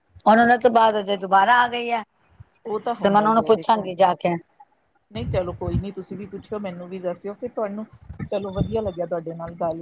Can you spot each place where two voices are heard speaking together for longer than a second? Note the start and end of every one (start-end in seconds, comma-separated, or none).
3.0-4.3